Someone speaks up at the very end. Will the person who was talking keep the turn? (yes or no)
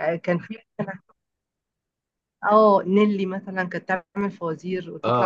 yes